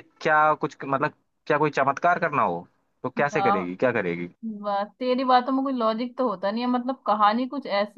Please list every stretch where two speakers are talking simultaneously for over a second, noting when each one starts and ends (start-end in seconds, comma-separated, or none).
none